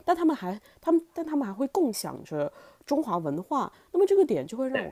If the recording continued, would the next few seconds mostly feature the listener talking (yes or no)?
no